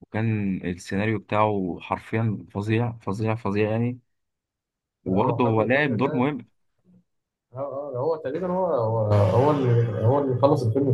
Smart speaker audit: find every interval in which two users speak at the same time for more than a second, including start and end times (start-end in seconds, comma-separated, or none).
5.1-6.3